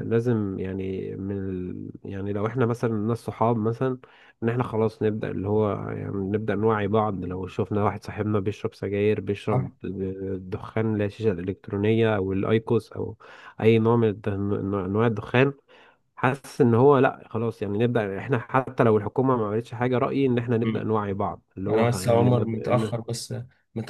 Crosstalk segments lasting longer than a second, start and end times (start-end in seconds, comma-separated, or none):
21.7-22.9